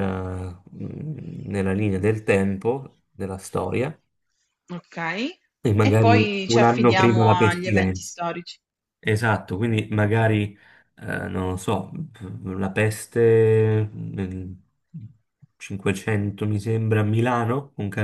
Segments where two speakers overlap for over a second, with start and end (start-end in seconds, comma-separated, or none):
5.8-8.1